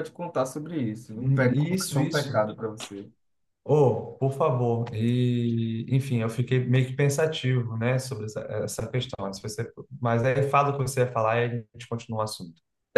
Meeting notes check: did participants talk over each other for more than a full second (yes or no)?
yes